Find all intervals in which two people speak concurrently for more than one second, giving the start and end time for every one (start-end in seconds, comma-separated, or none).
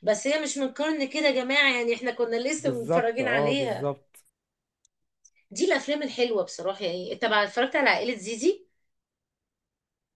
2.6-3.9